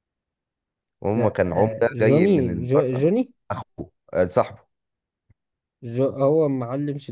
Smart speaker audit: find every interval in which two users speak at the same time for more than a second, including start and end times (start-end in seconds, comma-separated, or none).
1.1-3.1